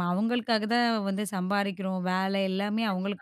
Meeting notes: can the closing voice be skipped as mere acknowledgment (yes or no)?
no